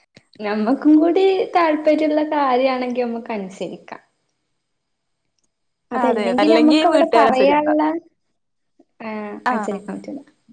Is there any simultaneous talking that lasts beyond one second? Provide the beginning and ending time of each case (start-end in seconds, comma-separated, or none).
6.0-7.7